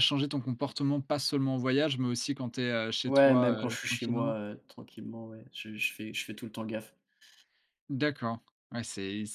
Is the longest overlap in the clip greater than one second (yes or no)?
yes